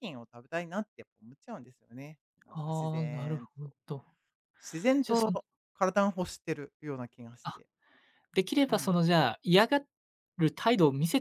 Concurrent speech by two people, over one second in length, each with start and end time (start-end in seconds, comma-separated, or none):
2.5-3.8